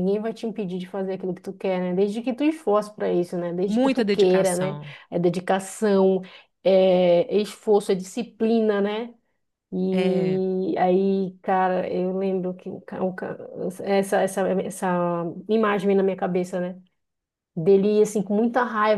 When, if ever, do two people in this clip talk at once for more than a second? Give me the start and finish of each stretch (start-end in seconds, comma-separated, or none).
3.6-4.9